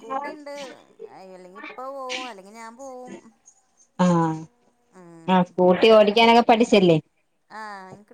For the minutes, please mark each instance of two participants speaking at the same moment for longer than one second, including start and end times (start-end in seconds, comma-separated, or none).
none